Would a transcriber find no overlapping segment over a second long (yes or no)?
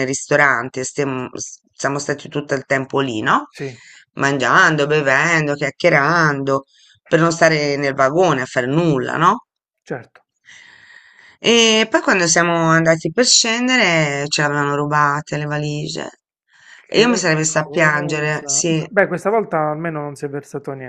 no